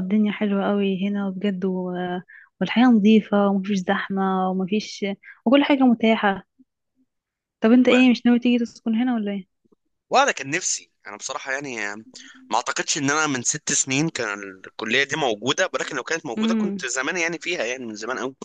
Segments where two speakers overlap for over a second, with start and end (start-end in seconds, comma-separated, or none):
none